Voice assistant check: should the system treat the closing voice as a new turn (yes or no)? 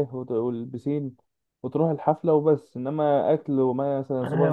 yes